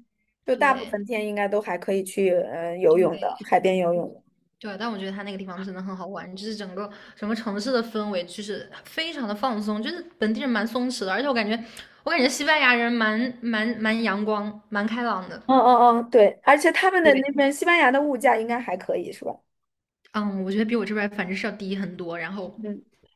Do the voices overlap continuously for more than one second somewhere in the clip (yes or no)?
no